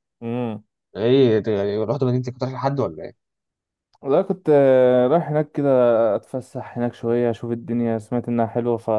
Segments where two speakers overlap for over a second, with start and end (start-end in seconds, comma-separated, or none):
none